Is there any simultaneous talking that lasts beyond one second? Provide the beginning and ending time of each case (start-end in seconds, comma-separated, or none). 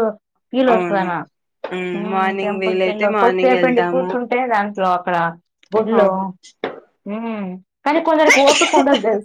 2.1-4.1